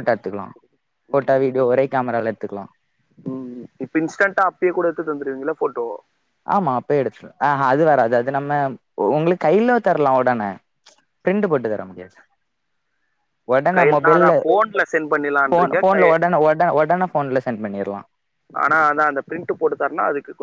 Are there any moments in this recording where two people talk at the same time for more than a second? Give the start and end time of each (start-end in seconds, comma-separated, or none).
none